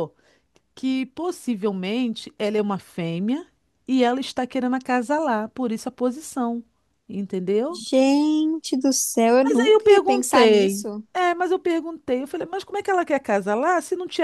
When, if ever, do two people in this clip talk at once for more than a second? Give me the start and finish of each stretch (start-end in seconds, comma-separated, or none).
9.4-11.0